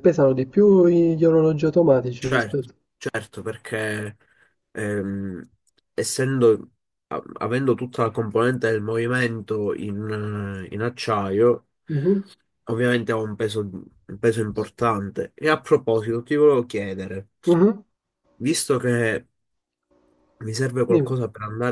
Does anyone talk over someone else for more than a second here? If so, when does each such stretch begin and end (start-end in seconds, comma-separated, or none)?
none